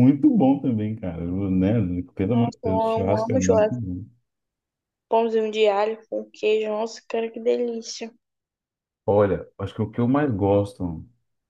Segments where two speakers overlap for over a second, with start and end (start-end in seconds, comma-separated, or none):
2.3-3.8